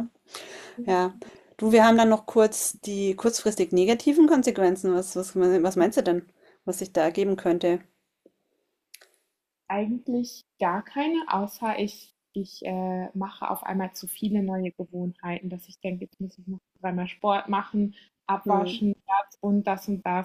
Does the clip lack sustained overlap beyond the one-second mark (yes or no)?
yes